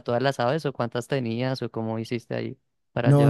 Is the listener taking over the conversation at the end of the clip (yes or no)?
yes